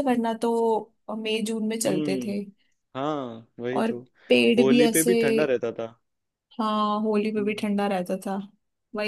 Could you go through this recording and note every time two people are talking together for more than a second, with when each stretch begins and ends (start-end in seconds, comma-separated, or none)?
none